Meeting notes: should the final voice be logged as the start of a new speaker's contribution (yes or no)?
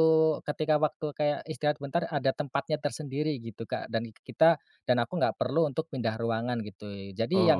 no